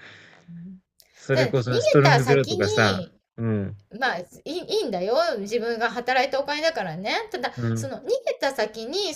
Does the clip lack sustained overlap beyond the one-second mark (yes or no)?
no